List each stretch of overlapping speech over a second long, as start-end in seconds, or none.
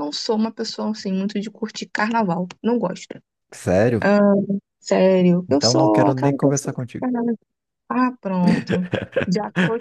5.5-7.1